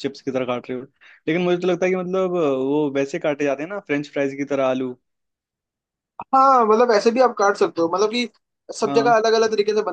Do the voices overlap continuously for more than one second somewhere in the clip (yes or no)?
no